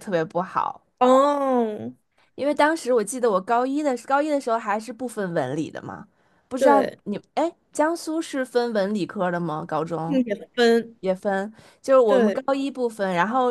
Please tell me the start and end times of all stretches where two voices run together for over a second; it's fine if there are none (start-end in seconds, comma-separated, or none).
none